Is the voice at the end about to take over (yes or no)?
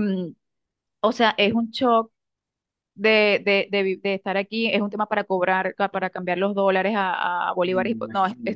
no